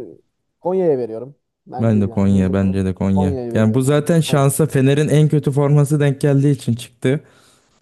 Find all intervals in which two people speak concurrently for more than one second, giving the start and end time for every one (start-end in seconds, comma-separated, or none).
1.8-4.5